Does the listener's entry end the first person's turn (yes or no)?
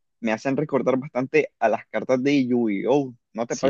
yes